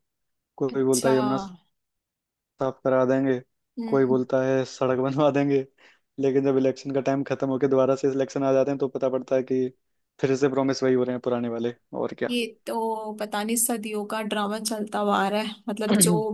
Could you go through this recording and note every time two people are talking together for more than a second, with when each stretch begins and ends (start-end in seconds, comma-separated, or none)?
none